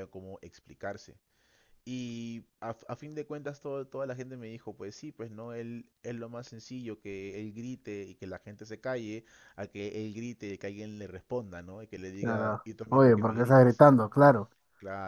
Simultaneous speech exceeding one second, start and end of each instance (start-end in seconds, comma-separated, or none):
12.2-13.8